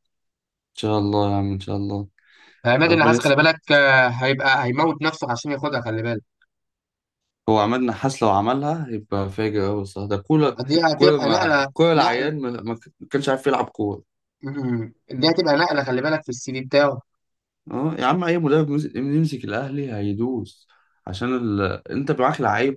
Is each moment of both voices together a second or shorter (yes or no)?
no